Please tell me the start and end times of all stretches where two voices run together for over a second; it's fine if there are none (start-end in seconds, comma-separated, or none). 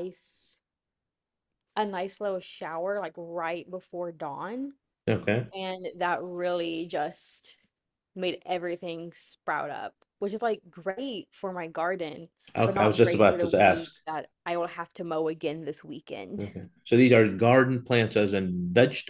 12.6-13.9